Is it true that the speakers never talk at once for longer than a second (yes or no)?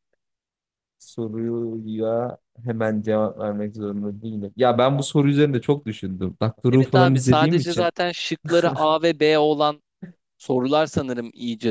no